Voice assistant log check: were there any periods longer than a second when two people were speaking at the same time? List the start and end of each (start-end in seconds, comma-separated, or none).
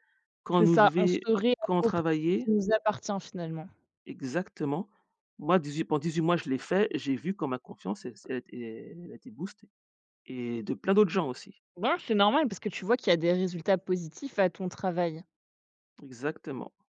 0.6-2.5